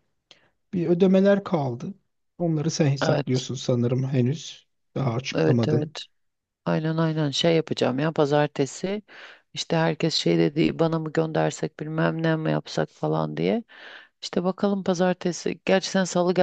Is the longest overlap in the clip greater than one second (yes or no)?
no